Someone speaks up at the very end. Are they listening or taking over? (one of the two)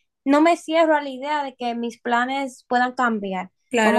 taking over